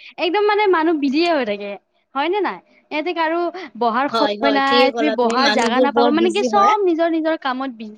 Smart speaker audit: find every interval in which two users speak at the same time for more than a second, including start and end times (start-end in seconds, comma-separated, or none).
4.1-6.6